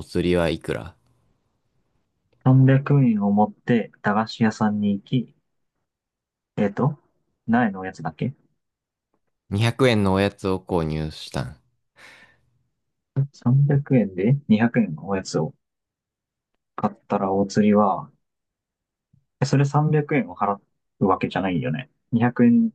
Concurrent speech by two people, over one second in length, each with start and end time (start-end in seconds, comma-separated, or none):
none